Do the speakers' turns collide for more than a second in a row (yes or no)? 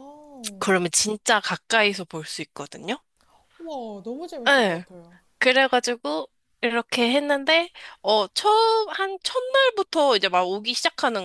no